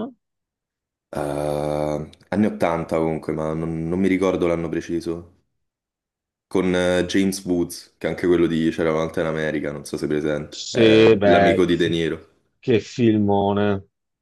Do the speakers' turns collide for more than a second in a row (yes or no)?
yes